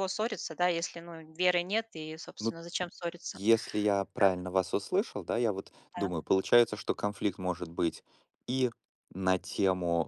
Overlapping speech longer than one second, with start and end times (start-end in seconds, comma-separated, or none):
none